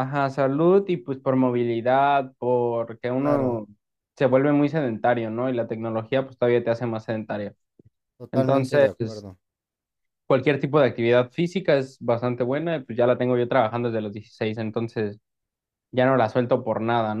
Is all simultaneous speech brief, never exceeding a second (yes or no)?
yes